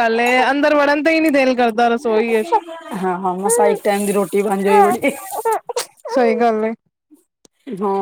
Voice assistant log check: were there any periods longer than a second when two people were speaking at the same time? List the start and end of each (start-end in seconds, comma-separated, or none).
none